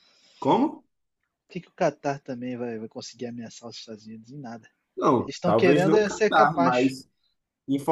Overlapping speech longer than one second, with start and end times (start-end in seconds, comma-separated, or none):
5.2-6.9